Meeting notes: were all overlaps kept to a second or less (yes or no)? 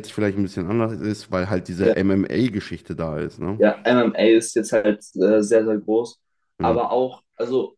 yes